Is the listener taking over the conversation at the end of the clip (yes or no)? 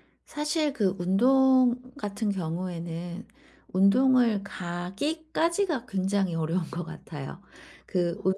no